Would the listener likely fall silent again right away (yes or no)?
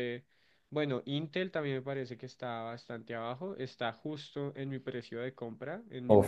no